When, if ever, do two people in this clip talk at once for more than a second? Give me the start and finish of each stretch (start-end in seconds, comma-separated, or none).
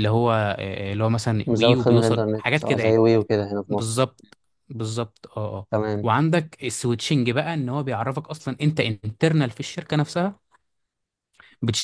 1.5-3.0